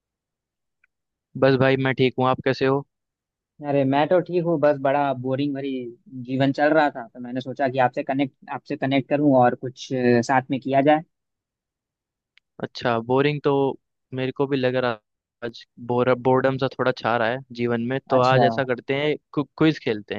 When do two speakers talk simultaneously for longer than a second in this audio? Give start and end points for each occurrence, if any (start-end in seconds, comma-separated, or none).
none